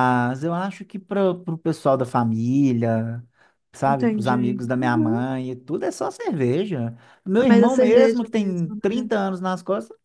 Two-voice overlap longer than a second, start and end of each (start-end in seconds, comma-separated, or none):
3.9-5.2, 7.5-9.1